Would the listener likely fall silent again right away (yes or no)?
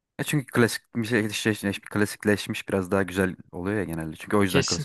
no